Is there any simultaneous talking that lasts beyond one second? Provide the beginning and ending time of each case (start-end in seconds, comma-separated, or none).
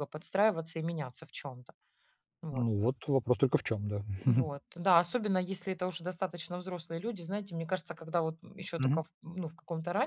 none